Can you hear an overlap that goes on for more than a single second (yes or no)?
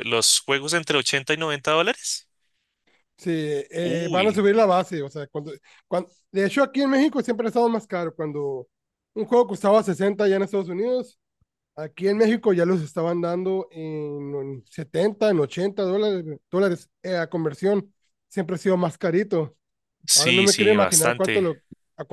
yes